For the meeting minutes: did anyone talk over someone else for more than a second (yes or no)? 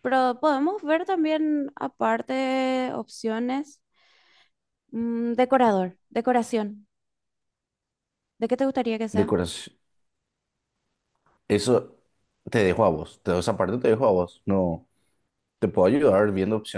no